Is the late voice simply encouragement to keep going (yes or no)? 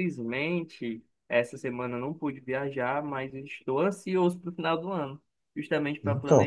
yes